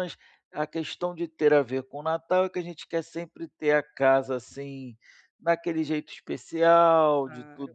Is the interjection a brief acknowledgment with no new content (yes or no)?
yes